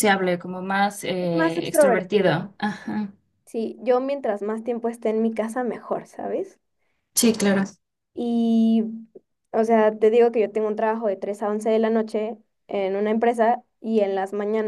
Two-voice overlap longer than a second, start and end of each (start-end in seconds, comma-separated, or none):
1.2-2.5